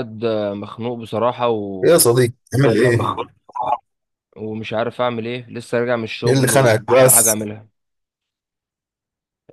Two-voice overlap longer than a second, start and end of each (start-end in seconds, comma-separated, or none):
6.3-7.5